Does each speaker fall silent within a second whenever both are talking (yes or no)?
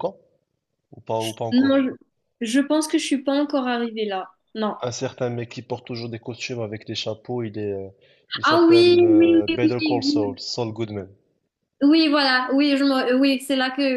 no